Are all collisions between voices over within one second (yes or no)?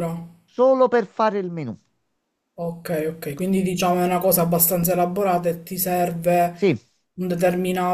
yes